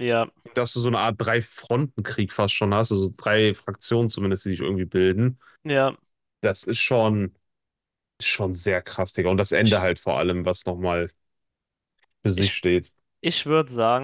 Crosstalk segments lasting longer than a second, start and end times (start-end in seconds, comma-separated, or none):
none